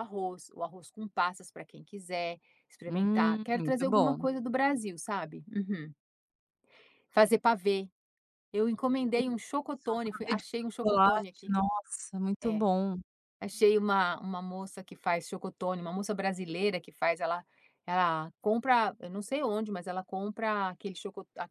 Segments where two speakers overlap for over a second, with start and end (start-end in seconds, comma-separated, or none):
2.9-4.3, 9.7-11.5